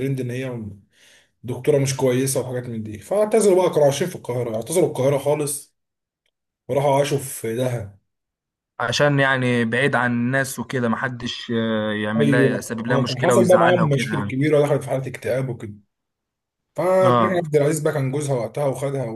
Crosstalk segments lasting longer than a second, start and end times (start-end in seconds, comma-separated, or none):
12.2-14.4